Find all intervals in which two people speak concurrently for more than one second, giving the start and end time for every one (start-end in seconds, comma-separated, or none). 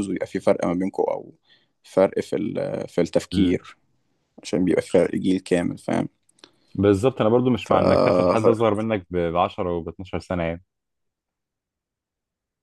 none